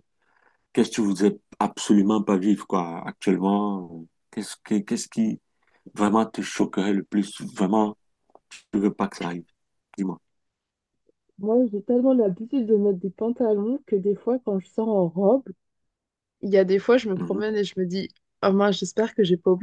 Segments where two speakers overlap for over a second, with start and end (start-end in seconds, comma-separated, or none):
none